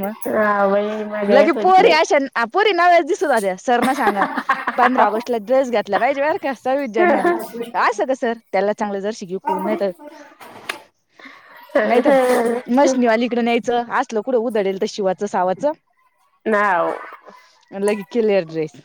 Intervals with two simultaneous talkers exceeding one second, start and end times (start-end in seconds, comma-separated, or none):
0.7-2.0